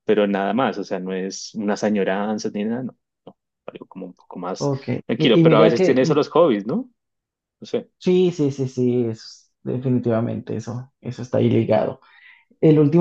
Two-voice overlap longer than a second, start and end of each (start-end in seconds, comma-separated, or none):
4.6-6.2